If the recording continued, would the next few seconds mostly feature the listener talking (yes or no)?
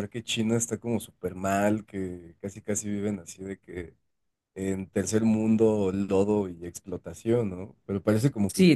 yes